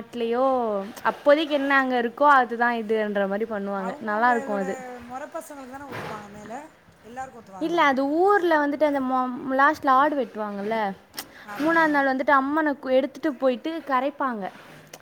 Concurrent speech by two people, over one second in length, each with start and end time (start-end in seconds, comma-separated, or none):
none